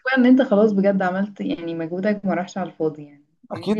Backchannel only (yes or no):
no